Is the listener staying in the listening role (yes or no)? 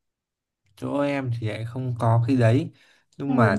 yes